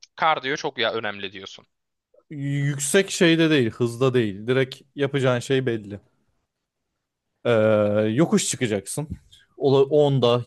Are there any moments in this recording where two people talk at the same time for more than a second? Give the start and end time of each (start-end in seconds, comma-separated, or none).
none